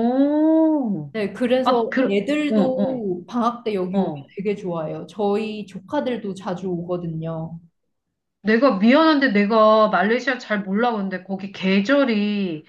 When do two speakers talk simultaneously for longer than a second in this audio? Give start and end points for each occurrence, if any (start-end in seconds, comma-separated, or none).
1.6-3.1